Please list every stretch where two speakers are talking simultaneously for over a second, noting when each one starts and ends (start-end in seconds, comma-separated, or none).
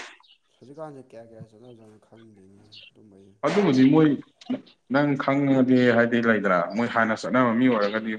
none